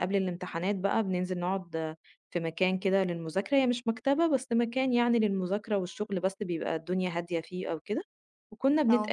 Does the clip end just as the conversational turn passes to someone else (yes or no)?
no